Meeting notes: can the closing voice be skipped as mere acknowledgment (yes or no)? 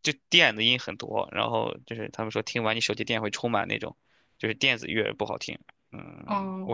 no